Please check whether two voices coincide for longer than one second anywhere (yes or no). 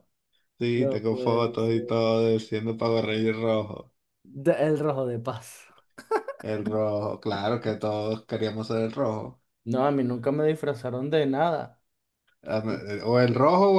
yes